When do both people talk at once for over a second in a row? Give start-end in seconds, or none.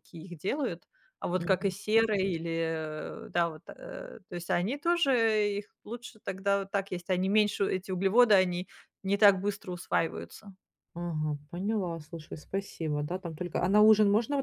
none